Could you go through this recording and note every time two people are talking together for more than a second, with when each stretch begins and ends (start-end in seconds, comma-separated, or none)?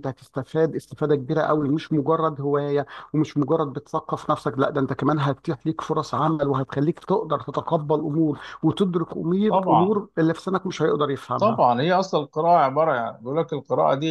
none